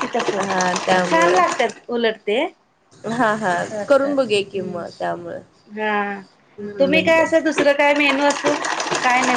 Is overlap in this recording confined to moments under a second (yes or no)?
no